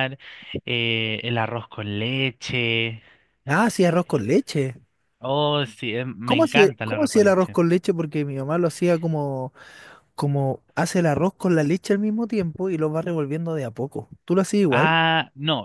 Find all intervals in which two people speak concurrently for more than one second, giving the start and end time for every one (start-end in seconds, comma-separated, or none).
6.2-7.5